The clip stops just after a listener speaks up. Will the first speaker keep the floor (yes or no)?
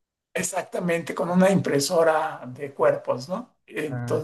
no